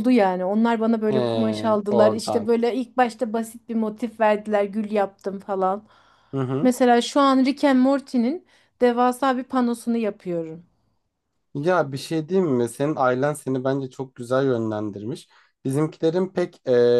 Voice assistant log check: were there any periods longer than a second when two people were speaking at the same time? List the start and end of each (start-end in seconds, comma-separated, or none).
none